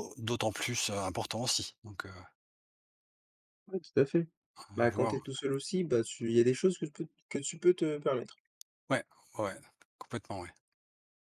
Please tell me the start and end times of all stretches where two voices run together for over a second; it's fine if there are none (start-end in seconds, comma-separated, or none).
none